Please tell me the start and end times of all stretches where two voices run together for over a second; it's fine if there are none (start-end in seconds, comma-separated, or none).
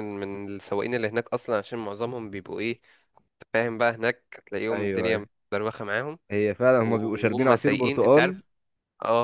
6.8-8.4